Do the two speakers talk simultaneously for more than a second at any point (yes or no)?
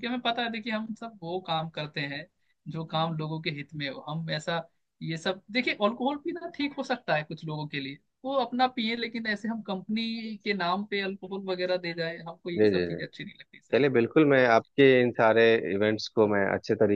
no